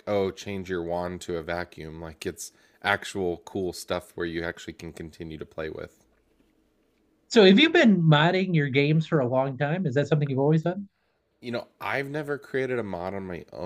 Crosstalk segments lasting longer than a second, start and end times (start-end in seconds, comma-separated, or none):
none